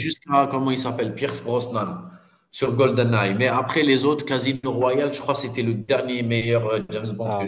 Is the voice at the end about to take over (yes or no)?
yes